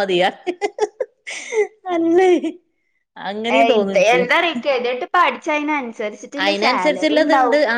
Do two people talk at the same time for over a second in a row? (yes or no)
no